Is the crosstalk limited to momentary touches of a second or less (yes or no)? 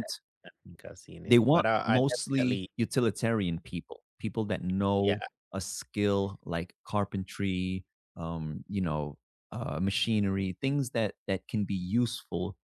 no